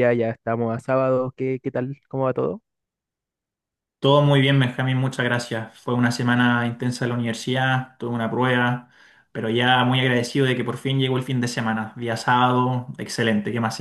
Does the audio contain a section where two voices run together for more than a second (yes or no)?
no